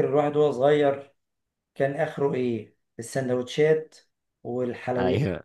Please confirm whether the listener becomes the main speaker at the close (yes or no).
no